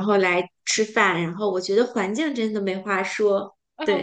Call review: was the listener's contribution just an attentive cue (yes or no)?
no